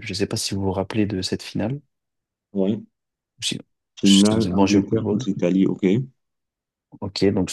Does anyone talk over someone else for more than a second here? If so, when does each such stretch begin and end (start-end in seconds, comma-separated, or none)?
4.0-5.3